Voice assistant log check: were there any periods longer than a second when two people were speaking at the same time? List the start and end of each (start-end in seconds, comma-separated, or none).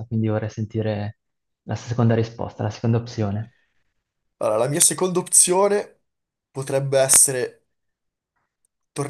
none